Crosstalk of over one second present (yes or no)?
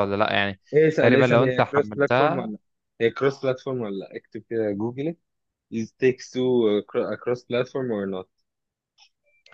yes